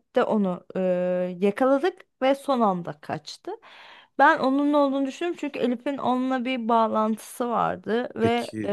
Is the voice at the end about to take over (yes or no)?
no